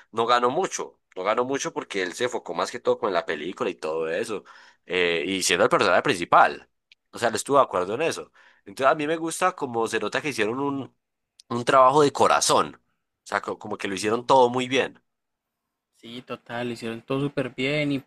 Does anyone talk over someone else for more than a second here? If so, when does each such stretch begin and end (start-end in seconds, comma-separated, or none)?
none